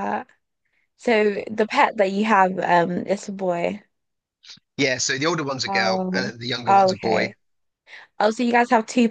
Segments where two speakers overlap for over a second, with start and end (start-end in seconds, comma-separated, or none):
5.7-7.3